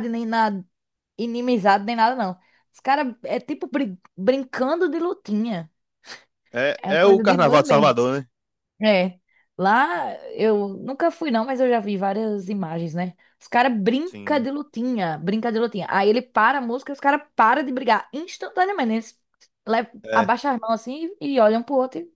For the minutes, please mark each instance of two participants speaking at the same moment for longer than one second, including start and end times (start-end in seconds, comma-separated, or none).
6.8-8.0